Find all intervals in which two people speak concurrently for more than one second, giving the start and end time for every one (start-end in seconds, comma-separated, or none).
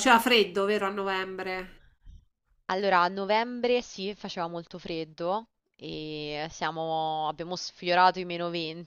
none